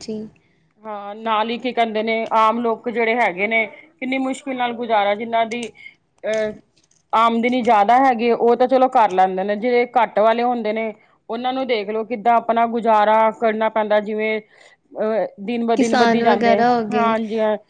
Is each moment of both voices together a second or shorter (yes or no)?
no